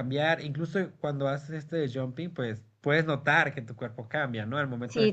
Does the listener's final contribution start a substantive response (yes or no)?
no